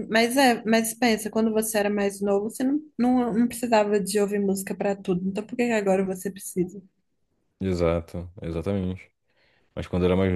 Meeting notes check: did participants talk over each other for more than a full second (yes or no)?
no